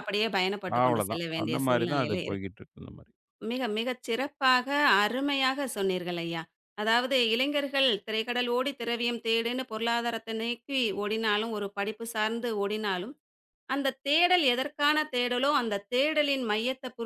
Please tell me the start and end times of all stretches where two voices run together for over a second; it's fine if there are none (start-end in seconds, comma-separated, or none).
0.8-2.5